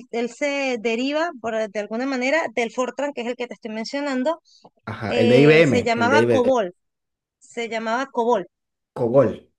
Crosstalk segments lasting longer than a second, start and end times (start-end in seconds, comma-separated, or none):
5.1-6.5